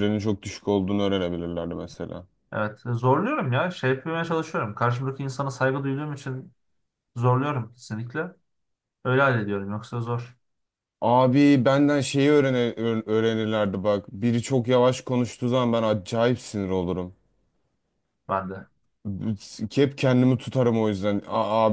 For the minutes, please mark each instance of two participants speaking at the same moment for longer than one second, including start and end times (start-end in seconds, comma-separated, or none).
none